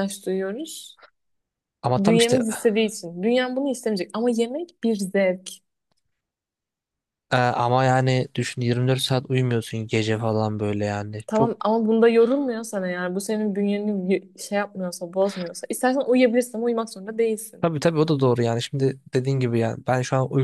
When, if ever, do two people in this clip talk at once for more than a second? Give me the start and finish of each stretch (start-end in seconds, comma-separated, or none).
none